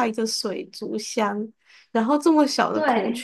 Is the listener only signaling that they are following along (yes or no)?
yes